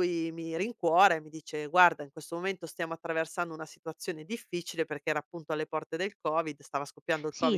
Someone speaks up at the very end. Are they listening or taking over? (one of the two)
taking over